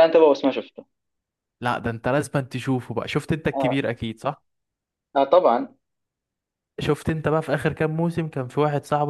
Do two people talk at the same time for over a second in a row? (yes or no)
no